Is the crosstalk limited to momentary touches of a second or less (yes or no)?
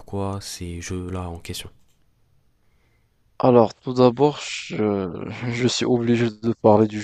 yes